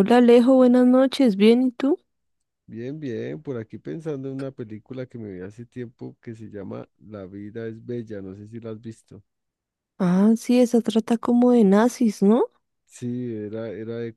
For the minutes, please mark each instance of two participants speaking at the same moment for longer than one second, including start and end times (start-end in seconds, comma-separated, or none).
none